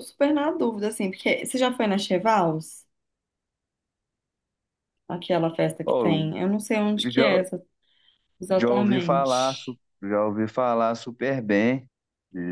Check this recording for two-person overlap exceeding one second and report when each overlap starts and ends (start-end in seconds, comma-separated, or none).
8.6-9.8